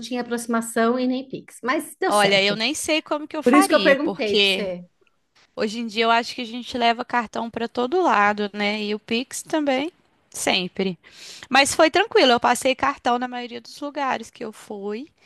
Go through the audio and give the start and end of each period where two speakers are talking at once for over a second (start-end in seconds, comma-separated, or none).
3.4-4.7